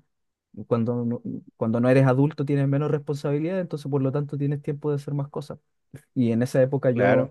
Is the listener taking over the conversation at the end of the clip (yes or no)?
no